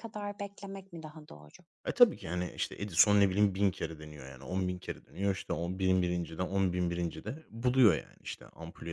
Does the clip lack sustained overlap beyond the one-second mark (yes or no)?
yes